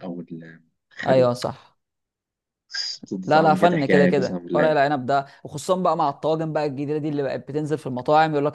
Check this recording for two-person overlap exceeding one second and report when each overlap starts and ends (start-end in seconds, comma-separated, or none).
3.3-4.8